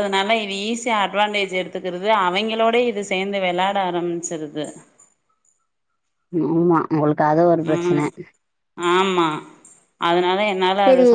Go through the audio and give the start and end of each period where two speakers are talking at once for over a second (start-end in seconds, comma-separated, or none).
none